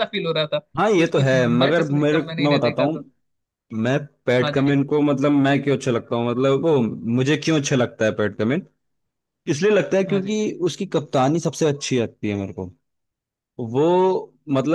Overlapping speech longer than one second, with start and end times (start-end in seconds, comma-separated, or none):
1.0-2.9